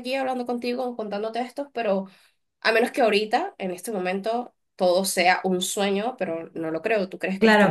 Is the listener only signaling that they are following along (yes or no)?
no